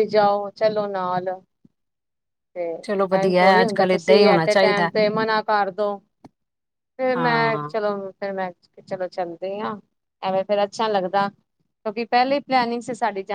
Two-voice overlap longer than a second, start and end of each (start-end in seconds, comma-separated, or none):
3.2-4.9